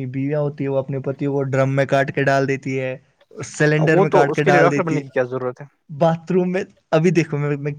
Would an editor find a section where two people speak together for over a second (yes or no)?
yes